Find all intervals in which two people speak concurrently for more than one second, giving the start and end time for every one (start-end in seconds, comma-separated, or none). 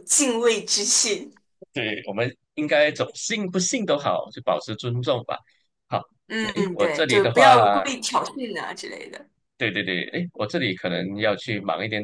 6.4-7.8